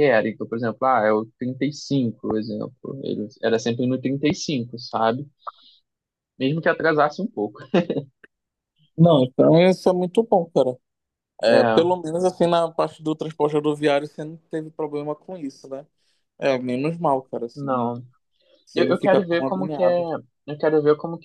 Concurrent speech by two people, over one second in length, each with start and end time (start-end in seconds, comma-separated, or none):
18.7-20.0